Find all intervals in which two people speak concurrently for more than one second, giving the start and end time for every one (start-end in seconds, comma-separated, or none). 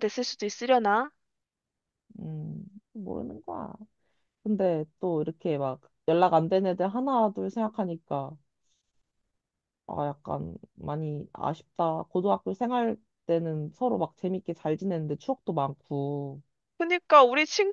none